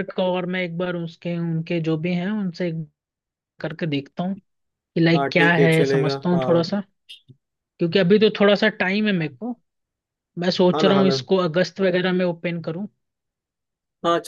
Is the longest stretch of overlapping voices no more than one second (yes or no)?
no